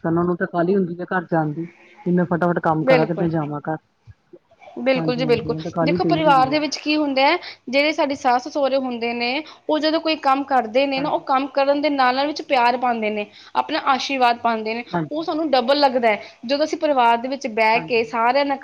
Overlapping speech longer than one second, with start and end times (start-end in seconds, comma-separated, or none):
5.0-6.6